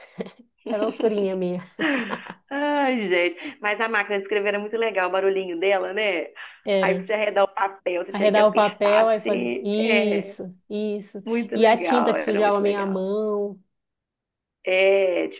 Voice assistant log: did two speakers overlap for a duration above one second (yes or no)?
yes